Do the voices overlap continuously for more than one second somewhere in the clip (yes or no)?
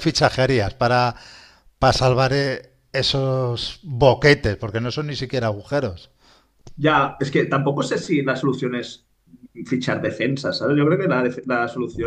no